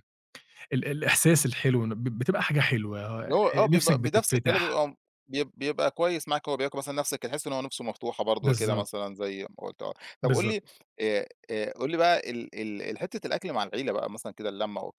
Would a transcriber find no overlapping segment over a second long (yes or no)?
no